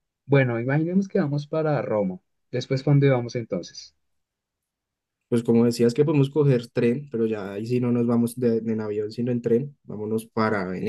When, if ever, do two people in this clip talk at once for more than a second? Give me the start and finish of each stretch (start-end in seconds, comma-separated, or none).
none